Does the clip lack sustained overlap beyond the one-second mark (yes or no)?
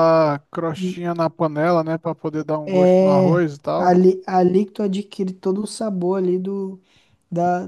no